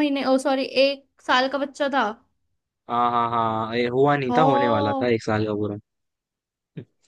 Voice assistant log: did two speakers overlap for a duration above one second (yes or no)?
no